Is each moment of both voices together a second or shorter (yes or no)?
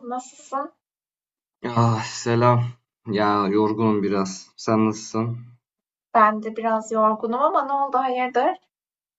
yes